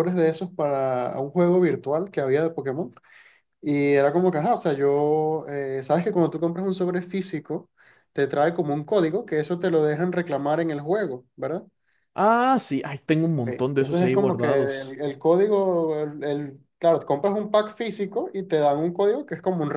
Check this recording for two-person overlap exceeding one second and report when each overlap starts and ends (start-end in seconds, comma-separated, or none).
13.5-15.0